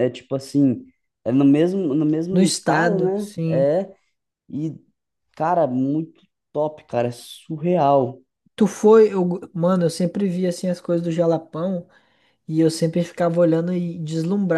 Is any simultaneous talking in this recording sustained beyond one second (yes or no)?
yes